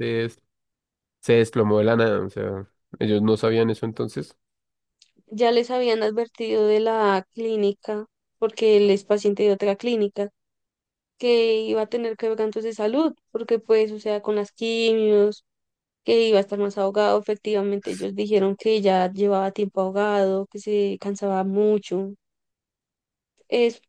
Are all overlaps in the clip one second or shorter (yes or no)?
yes